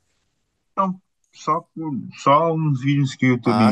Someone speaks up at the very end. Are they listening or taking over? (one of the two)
taking over